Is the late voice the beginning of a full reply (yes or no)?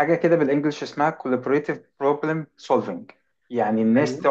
no